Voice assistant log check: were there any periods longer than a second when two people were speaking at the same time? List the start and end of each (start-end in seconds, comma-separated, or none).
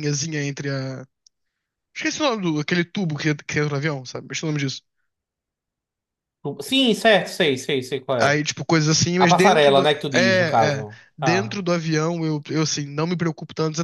9.2-11.6